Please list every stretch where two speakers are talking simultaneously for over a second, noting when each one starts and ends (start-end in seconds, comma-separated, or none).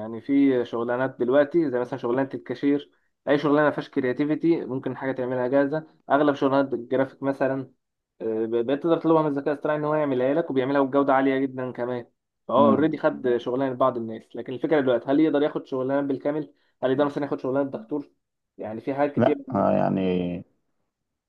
none